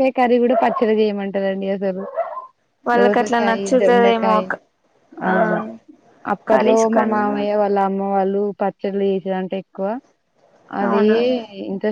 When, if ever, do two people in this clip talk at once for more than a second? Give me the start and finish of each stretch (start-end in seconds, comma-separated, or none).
3.0-4.4